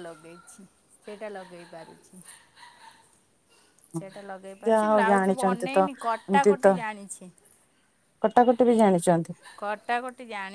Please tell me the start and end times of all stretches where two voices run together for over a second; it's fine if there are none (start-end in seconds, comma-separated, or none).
4.7-6.7